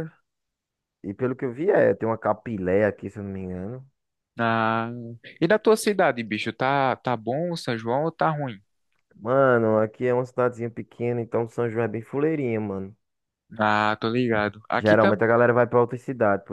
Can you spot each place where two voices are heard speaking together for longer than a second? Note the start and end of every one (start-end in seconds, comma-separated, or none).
none